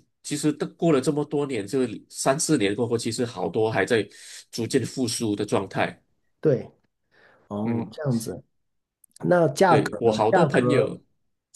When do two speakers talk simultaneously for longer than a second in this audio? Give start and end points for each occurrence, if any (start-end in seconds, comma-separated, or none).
9.7-11.0